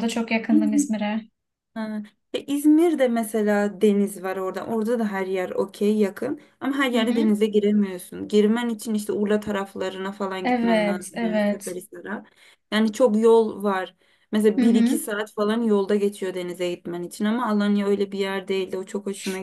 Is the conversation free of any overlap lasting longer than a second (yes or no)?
no